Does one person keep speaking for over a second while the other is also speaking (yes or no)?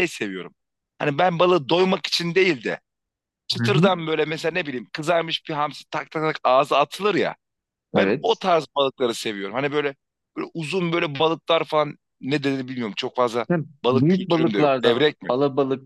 yes